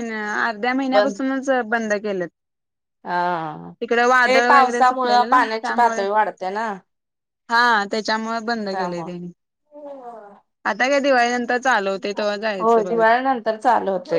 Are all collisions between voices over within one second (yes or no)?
no